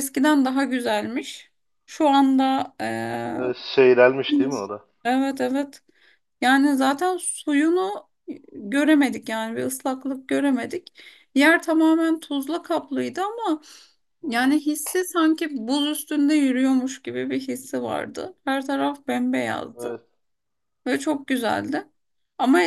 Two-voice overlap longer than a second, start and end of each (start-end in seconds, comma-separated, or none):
none